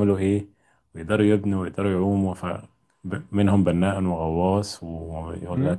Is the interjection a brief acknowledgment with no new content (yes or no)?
yes